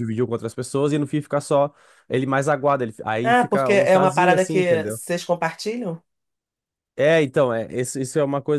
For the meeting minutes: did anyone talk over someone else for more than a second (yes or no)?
yes